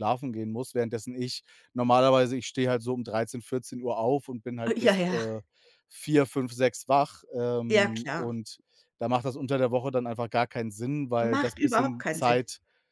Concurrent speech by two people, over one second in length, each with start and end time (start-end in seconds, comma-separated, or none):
11.2-12.4